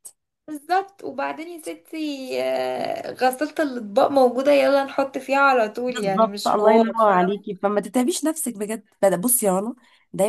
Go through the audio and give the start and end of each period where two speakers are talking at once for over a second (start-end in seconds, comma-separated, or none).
5.9-7.5